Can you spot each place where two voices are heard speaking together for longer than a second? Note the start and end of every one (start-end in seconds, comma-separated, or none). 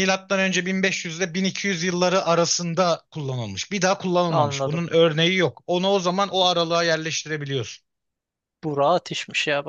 none